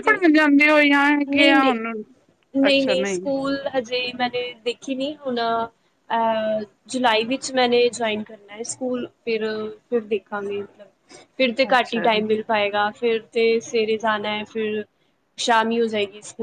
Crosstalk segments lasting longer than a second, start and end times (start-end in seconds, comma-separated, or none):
none